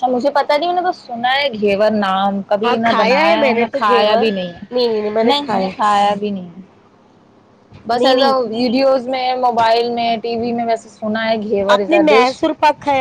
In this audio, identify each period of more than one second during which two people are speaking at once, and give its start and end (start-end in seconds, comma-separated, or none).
2.6-4.3